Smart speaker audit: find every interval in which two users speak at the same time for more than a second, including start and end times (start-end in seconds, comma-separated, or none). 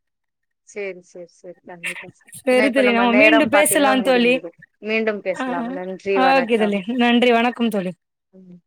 2.4-4.3